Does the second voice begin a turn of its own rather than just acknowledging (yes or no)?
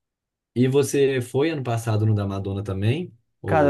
yes